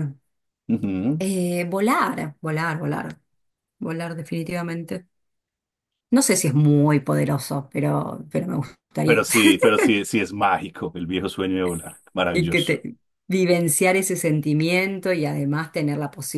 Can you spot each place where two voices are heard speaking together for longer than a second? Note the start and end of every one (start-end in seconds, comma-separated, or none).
none